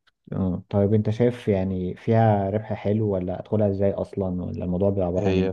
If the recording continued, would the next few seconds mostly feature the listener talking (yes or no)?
yes